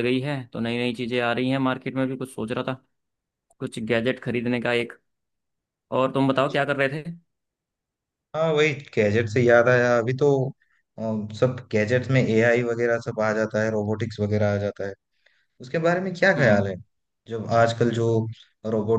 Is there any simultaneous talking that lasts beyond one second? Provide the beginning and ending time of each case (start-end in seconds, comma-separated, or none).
none